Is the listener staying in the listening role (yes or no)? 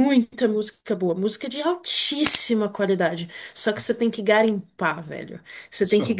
yes